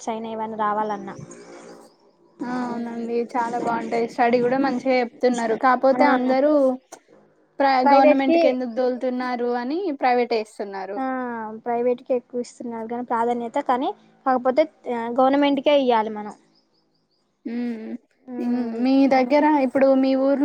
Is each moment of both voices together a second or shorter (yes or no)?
yes